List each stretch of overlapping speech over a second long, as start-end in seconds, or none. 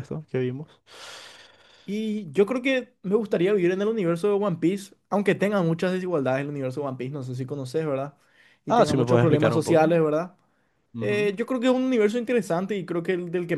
8.7-10.0